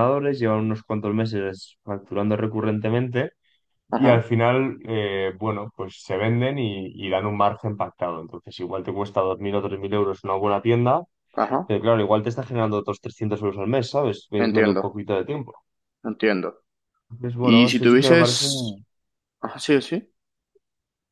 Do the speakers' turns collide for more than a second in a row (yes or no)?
yes